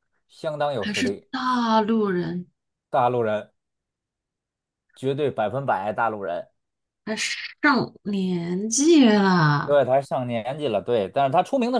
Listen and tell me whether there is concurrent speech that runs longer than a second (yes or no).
no